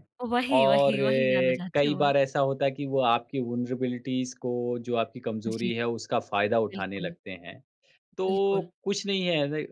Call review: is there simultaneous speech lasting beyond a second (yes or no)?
yes